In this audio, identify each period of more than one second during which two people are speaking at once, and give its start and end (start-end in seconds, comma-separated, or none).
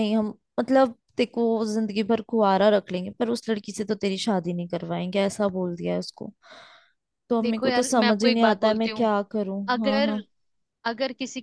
7.4-9.1